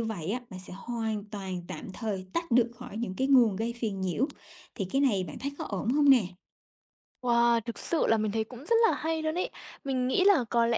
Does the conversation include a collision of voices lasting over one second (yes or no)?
no